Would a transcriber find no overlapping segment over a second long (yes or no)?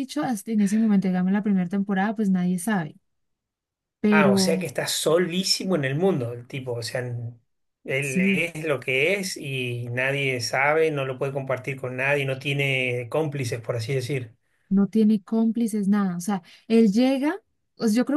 yes